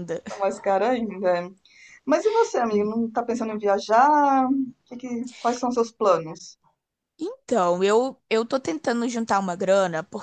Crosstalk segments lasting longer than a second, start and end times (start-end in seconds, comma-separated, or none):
none